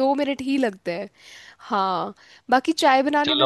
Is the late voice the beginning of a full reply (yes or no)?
yes